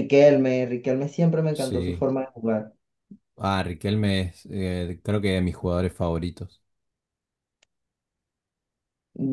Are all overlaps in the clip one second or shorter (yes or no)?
yes